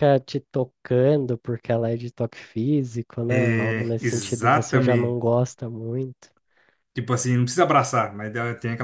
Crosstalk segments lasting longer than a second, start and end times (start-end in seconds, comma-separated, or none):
3.3-5.3